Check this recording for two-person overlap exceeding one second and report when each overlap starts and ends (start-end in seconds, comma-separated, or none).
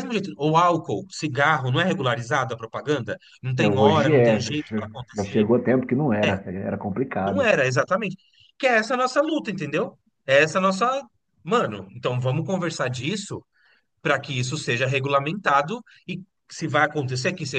3.5-5.5